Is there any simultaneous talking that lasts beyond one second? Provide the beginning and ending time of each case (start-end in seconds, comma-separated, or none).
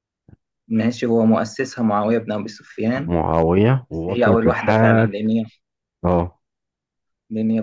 3.9-5.1